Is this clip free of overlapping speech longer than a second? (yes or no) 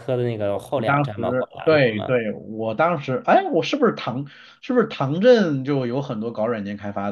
no